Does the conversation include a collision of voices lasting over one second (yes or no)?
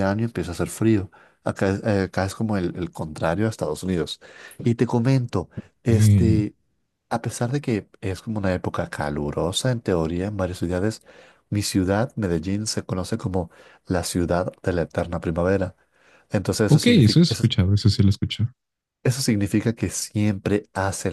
no